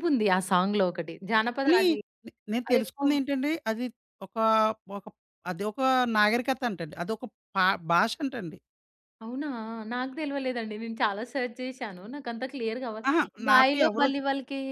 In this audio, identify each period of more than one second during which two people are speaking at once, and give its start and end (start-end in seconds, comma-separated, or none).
none